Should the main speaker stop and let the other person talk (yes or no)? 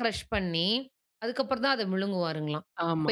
no